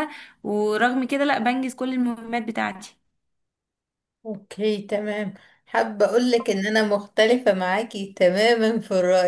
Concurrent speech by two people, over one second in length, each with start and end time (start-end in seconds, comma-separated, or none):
none